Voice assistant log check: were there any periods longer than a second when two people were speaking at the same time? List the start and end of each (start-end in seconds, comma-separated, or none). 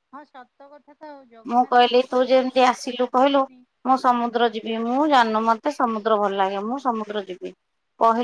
1.5-3.4